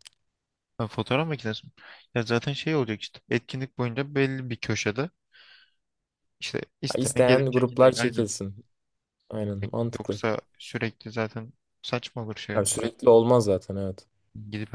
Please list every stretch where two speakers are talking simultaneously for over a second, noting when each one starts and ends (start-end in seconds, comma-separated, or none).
6.9-8.2